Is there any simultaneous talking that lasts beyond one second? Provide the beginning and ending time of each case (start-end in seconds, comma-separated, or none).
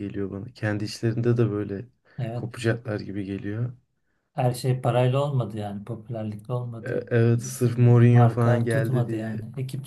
6.8-9.3